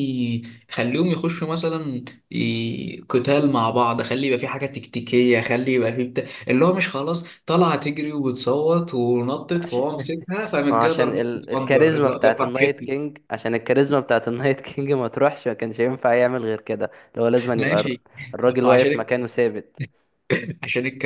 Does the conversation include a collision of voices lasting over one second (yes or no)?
yes